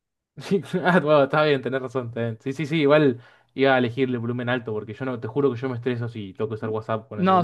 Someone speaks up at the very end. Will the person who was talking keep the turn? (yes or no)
no